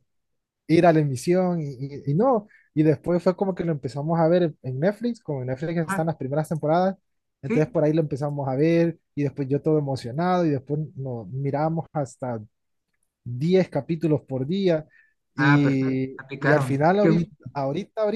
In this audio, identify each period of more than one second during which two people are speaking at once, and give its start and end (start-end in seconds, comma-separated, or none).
15.4-17.3